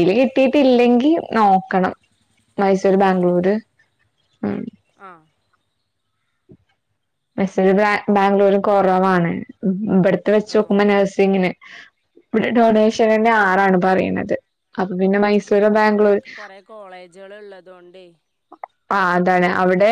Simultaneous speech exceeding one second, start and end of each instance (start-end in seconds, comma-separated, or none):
none